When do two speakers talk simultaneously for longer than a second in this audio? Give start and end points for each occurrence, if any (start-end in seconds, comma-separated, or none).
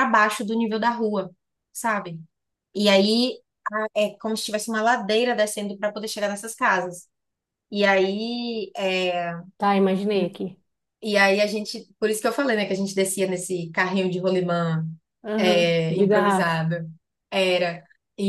15.4-16.6